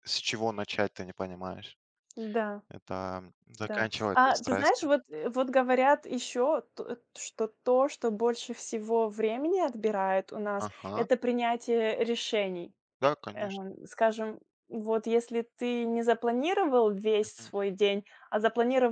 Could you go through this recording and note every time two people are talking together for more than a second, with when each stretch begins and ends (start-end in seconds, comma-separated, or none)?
3.6-4.9